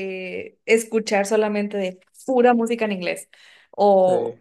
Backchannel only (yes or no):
yes